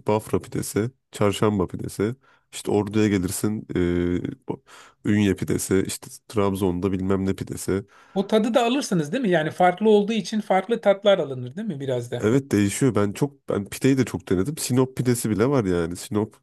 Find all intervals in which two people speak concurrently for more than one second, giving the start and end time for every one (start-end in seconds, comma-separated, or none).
none